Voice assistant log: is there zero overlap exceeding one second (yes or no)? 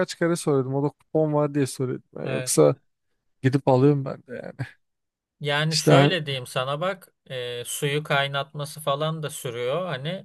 yes